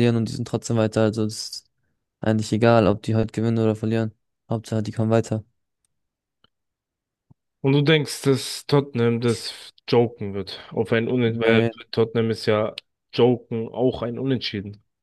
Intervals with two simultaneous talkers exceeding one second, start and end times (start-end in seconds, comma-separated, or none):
none